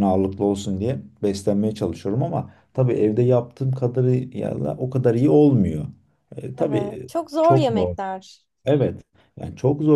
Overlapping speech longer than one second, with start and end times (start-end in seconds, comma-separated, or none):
6.6-8.0